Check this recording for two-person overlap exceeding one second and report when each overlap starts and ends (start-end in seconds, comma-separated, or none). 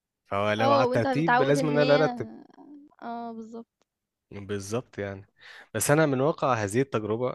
0.6-2.1